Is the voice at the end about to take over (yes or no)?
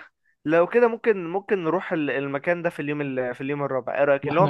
yes